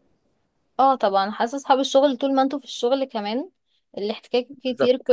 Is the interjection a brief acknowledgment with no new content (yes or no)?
yes